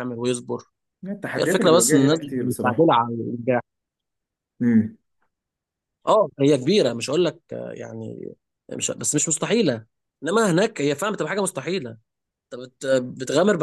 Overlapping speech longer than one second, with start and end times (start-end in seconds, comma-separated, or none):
1.4-2.9